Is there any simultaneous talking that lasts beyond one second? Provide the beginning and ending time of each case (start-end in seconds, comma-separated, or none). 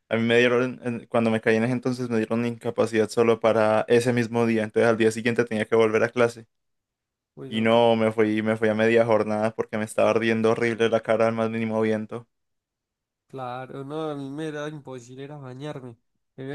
none